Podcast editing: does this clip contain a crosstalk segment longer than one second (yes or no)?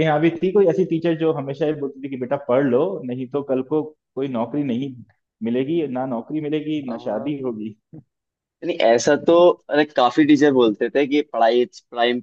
no